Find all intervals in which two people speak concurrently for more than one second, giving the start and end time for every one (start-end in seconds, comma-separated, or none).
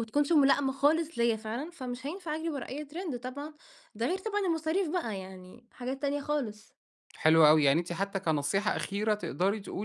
none